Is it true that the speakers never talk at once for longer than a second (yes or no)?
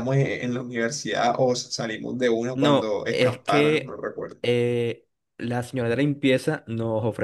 no